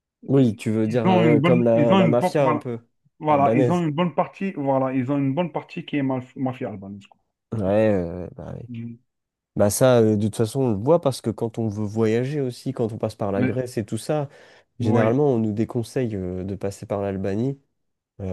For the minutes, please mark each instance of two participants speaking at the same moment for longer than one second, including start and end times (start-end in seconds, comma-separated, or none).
0.8-2.6